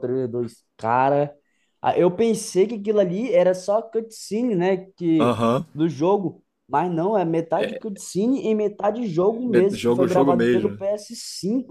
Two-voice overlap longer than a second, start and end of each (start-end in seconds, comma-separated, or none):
9.5-10.8